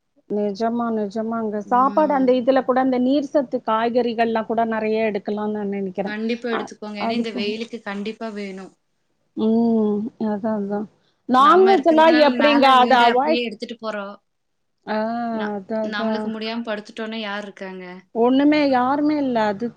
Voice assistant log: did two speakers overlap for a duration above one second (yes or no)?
yes